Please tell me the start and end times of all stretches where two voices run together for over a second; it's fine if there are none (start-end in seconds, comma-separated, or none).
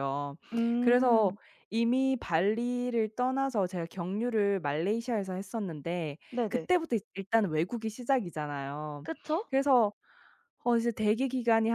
none